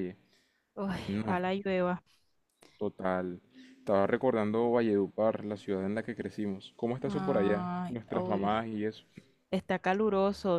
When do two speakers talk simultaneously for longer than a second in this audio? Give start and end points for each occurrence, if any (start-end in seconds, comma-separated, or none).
7.1-8.6